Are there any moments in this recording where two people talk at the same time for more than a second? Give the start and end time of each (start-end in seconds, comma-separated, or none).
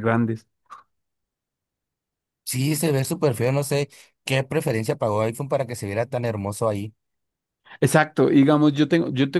none